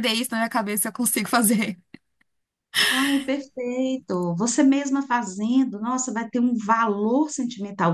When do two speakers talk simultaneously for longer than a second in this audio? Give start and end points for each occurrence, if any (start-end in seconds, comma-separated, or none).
none